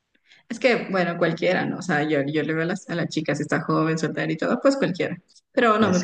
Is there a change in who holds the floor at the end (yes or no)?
no